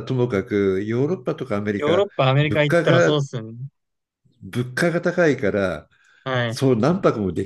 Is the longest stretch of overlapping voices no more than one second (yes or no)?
no